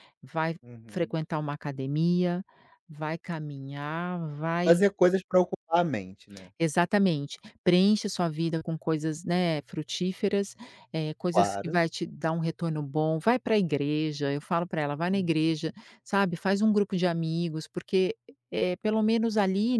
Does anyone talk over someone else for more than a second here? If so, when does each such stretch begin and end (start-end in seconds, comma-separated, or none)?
none